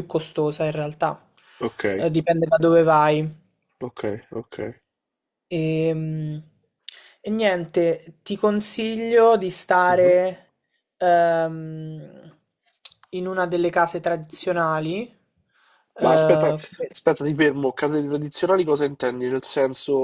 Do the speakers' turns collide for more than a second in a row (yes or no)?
no